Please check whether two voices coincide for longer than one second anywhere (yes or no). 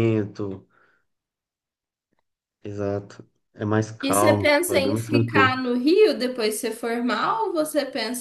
yes